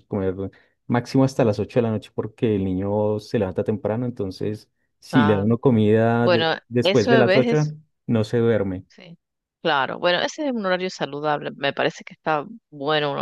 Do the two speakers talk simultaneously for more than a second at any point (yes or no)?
yes